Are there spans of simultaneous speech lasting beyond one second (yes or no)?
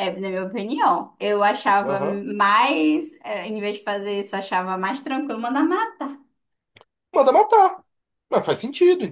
no